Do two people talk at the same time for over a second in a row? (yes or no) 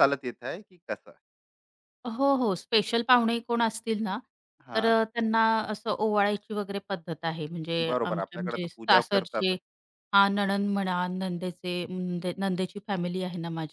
yes